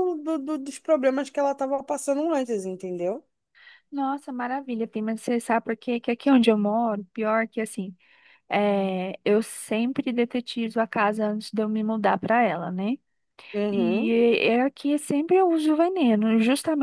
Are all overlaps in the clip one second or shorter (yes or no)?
yes